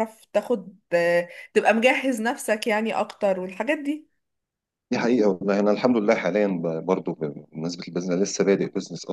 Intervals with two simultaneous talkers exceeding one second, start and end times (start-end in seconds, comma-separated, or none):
none